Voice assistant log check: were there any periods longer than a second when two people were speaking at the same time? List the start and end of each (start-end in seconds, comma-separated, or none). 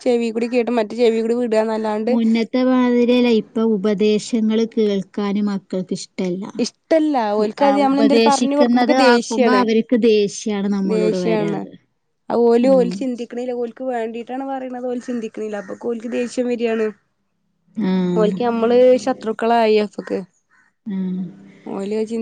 7.9-9.6